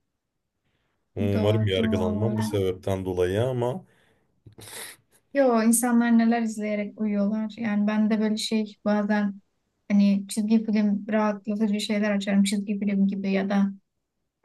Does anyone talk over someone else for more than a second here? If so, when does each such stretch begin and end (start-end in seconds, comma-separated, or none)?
1.2-2.6